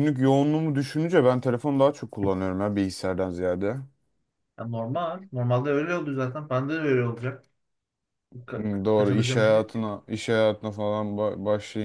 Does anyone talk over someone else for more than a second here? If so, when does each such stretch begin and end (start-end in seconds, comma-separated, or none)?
8.6-9.9